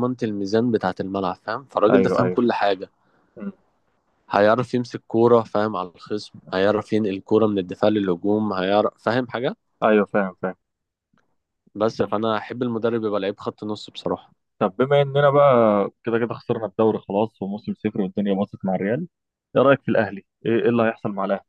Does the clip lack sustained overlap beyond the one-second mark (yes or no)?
yes